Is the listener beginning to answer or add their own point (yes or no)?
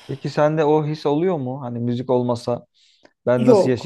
no